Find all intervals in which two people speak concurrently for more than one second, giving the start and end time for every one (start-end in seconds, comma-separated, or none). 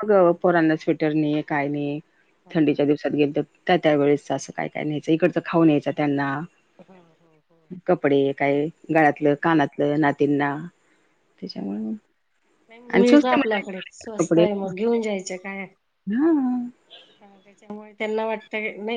13.0-14.4